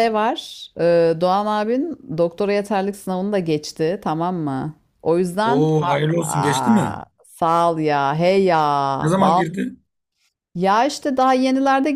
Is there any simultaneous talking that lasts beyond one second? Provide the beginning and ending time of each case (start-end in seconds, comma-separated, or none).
5.4-7.0